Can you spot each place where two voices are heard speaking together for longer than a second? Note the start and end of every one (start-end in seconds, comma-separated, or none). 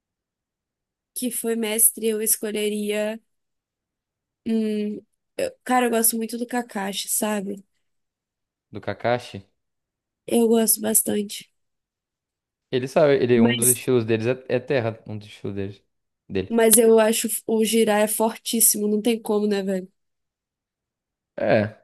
none